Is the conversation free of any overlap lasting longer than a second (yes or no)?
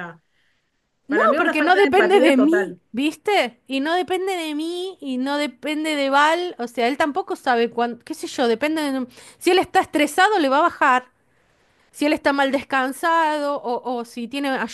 no